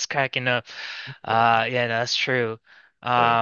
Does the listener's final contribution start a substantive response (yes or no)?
no